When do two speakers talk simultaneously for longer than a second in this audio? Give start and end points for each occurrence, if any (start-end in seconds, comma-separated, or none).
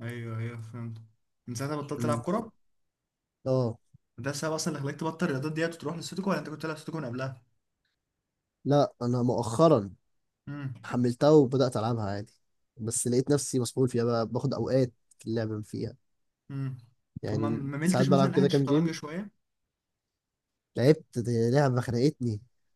17.3-18.9